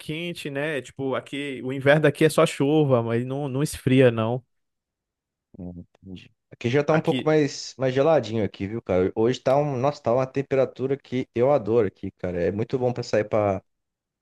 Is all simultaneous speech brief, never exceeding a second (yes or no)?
yes